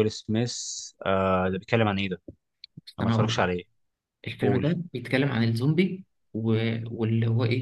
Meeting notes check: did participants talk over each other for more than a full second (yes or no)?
no